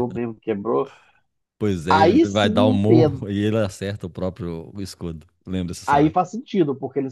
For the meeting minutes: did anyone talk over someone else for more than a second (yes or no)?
yes